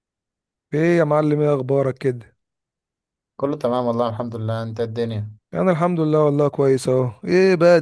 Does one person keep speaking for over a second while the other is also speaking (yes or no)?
no